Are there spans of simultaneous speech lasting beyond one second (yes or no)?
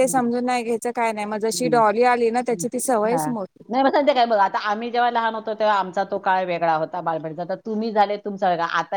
no